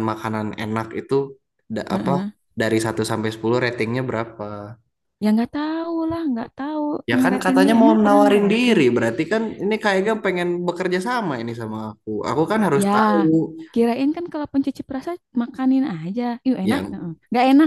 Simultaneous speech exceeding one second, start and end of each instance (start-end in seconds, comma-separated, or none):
7.2-8.8